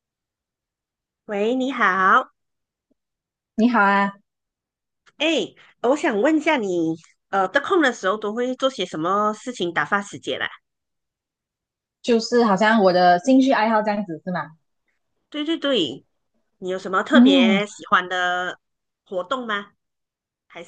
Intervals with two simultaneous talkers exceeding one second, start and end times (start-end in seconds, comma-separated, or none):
none